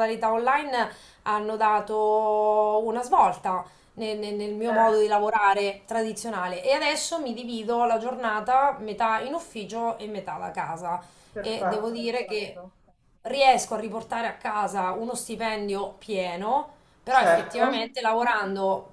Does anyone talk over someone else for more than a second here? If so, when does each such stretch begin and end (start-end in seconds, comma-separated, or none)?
11.4-12.6